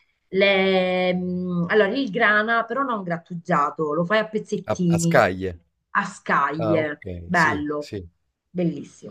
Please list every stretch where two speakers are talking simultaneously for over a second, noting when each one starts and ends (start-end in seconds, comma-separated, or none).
6.6-7.9